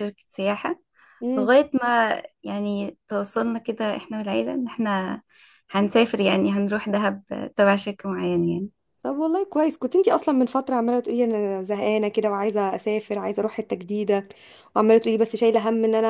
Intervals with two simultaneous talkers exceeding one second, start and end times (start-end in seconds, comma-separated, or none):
none